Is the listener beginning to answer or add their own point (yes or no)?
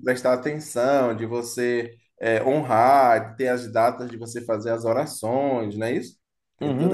yes